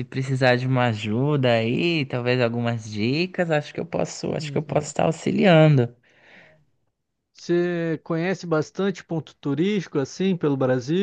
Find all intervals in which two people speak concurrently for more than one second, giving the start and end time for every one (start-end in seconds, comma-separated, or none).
none